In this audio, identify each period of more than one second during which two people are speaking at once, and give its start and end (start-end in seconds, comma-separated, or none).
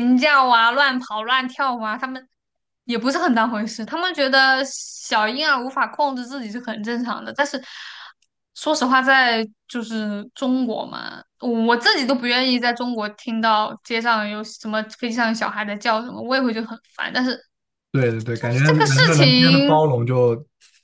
18.3-19.8